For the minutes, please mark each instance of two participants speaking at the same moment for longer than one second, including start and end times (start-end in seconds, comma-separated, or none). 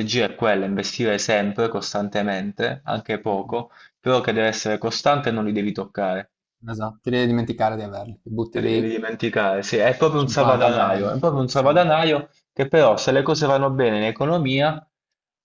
10.2-11.7